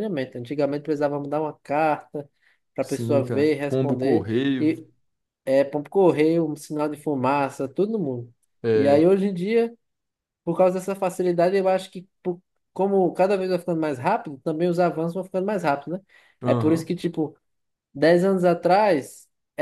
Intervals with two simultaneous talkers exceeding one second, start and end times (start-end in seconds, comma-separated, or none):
2.8-4.7